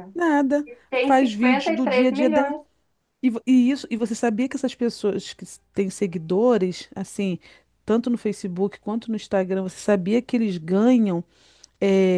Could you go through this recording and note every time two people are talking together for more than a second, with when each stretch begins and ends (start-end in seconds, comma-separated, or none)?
0.7-2.5